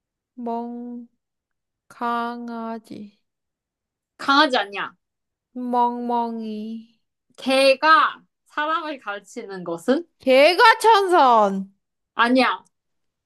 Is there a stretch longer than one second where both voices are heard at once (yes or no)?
no